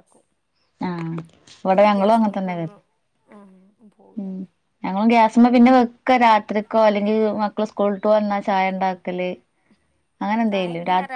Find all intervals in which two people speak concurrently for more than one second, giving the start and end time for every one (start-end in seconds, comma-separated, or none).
none